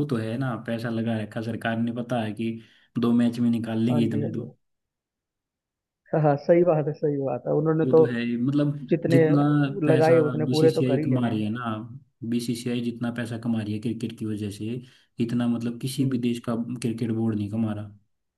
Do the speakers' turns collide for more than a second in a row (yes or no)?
yes